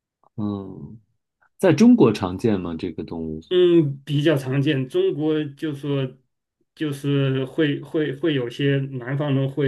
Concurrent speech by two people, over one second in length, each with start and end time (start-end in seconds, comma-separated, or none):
none